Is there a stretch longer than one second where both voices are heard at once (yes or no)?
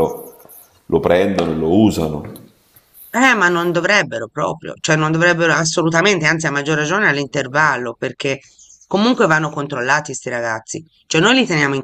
no